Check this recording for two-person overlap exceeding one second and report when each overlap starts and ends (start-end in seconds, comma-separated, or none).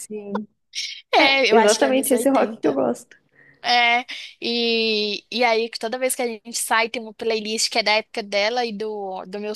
1.2-2.8